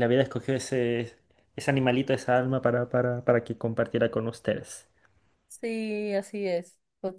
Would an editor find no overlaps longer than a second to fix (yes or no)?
yes